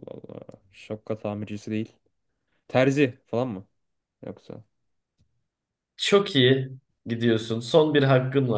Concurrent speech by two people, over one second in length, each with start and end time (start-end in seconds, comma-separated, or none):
none